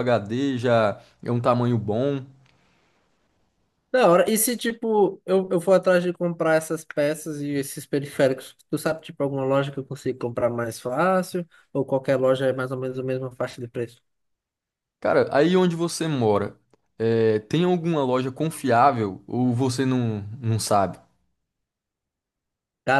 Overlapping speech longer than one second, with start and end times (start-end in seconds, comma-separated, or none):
none